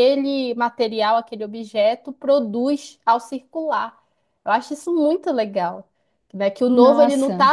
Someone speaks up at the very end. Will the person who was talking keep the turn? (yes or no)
yes